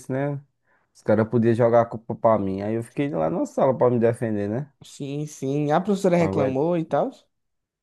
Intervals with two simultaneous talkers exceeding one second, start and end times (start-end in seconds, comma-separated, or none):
none